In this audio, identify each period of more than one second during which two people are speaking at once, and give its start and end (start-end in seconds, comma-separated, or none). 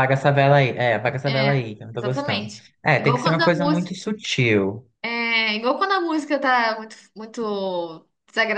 1.3-3.9